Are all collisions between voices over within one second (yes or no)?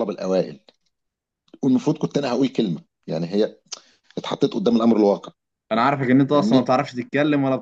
yes